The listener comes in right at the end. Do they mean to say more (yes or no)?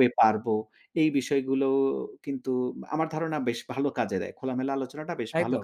yes